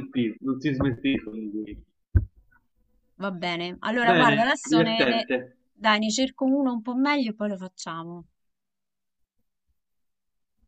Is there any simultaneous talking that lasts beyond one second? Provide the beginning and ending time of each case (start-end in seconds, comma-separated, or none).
4.0-5.3